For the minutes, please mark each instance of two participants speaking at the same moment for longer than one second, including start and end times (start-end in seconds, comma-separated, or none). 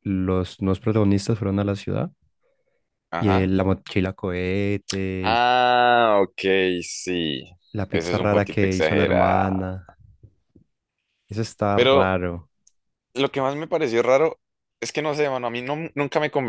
7.9-9.5